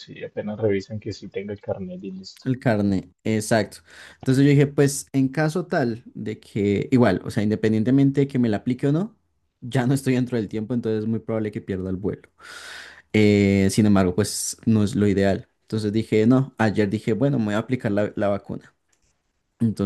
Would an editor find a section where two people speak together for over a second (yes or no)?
no